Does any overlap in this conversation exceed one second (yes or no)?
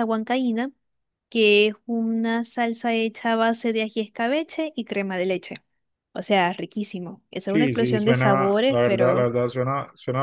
yes